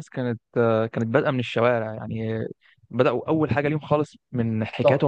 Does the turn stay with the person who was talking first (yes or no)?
yes